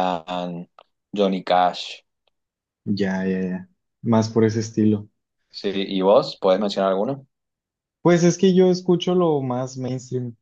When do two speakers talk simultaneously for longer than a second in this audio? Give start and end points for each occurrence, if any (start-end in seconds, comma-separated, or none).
none